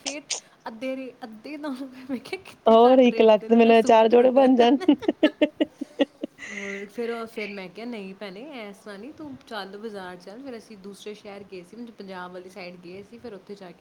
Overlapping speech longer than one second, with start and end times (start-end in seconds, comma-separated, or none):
2.7-4.5